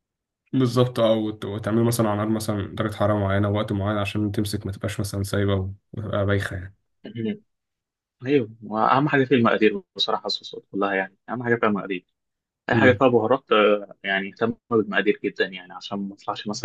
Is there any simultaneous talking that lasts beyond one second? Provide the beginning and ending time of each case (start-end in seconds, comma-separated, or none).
none